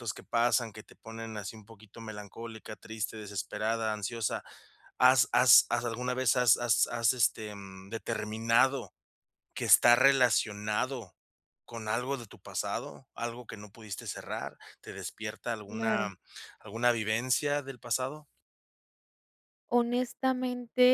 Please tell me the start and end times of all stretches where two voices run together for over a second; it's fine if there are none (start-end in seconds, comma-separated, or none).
none